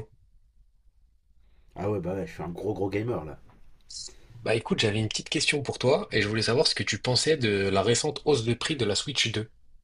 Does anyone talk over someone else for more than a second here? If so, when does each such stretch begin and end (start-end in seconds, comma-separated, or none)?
none